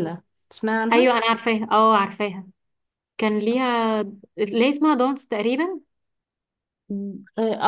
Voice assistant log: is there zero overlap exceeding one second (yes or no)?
yes